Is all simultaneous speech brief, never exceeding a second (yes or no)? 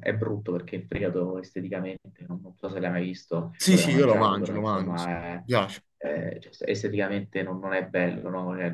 no